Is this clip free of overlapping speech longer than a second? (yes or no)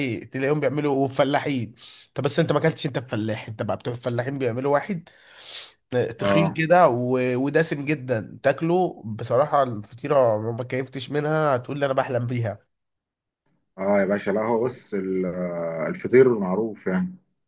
yes